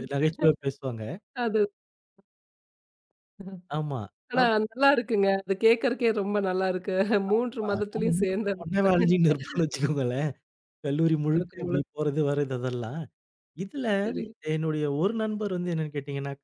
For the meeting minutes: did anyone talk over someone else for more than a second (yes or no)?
yes